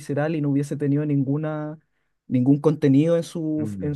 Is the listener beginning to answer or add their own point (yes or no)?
no